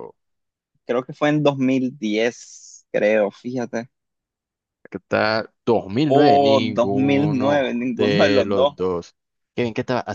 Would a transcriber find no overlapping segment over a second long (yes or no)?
no